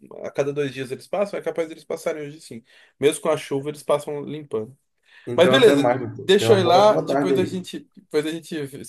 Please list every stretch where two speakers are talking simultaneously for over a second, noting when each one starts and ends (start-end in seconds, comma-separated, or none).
5.3-7.6